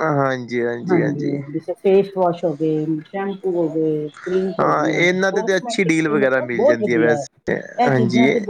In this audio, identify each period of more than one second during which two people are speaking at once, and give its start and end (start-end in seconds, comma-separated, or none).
4.6-7.2